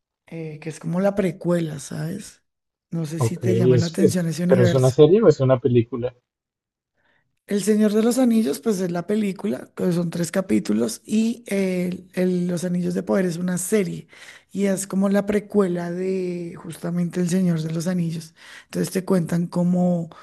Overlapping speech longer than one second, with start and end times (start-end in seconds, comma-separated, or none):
3.2-5.0